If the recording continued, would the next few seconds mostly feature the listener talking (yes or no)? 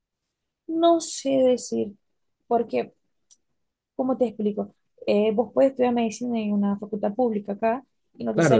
yes